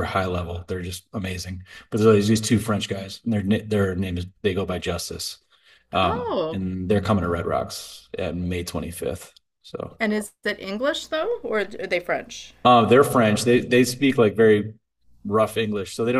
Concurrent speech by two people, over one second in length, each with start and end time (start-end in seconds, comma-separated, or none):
none